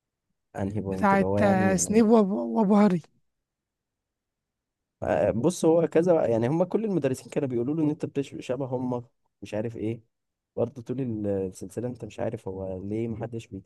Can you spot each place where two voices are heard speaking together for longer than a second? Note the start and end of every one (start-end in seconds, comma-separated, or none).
0.8-2.0